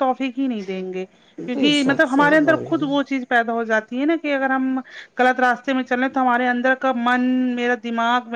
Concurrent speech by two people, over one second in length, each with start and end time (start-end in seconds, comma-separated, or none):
1.5-3.1